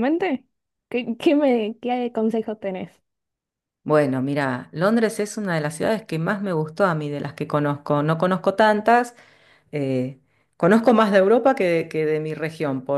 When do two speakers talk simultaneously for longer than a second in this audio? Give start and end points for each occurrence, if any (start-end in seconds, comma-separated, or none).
none